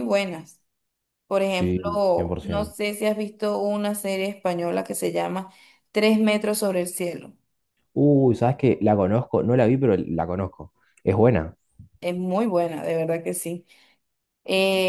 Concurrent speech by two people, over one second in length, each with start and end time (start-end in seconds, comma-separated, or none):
1.5-2.8